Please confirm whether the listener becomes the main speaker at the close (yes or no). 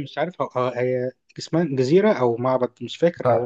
yes